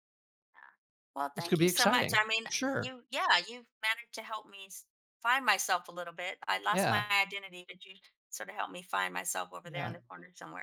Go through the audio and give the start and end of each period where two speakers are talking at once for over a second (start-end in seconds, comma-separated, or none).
1.3-2.9